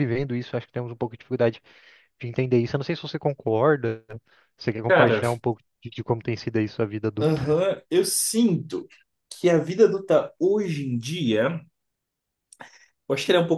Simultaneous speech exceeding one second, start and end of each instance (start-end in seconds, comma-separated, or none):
none